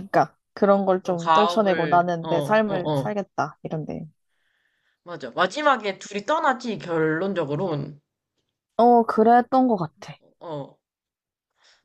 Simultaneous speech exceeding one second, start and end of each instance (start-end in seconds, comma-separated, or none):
1.0-3.1